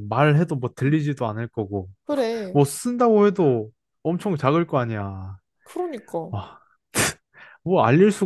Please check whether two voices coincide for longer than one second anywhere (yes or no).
no